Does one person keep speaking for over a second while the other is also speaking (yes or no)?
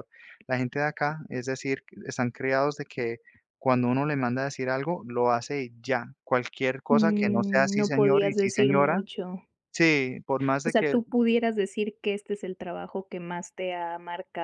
yes